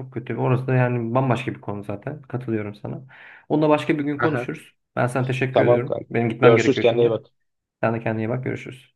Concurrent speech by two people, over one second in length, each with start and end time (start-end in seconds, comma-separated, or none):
5.5-7.2